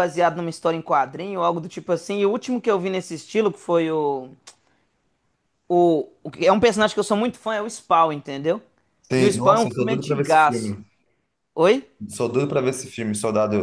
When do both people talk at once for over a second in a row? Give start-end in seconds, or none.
9.2-10.8